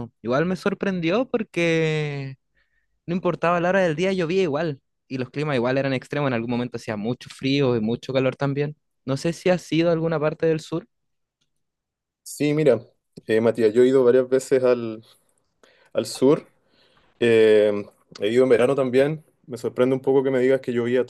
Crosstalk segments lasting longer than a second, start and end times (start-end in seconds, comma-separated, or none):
none